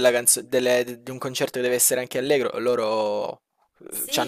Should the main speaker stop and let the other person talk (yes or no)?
yes